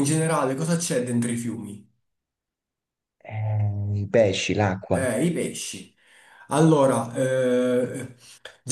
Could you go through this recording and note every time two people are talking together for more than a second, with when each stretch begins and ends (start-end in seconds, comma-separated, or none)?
none